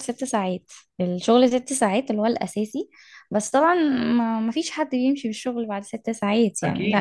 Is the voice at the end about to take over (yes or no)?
yes